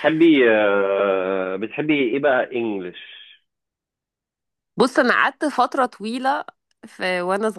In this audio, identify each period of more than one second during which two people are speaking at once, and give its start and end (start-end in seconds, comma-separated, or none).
none